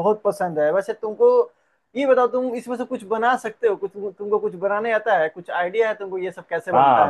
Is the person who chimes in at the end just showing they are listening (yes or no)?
no